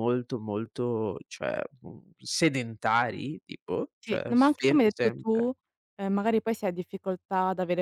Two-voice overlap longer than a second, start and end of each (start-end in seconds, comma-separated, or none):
4.0-5.5